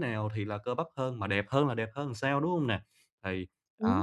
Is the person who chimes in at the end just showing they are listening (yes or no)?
yes